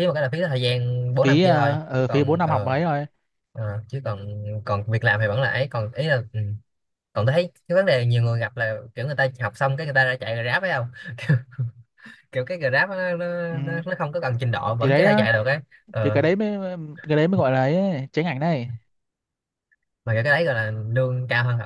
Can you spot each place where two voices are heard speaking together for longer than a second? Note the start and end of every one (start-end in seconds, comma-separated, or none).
1.2-2.7